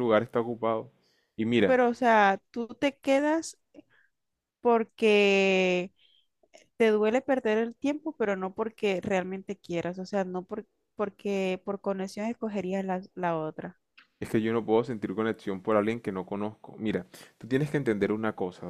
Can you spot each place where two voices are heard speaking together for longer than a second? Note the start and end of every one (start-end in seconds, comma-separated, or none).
none